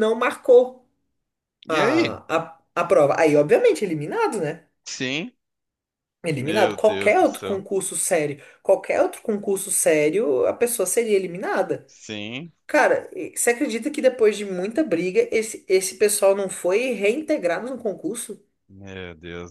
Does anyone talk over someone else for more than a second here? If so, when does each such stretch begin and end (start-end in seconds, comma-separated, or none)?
6.4-7.6